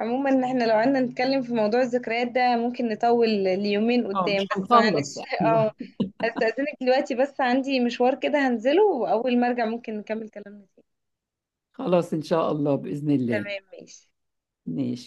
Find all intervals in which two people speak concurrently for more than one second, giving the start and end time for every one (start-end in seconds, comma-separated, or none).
4.1-5.7